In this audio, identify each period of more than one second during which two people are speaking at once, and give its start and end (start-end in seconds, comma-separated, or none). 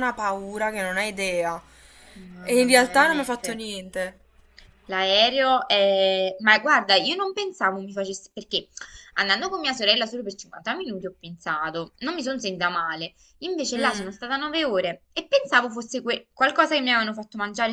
2.4-3.6